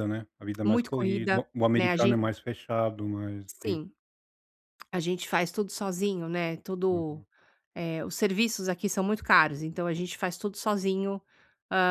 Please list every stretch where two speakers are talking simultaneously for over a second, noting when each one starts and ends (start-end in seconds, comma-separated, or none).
0.7-2.2